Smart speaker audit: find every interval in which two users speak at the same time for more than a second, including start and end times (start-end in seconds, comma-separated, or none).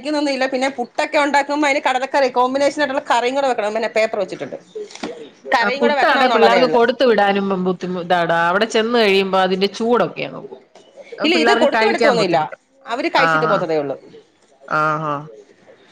none